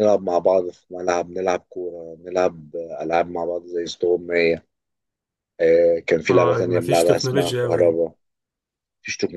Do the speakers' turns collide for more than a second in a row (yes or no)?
yes